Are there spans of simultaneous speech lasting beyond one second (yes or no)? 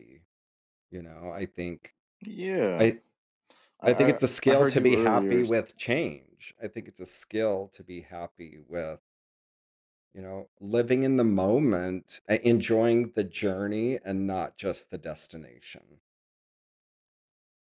yes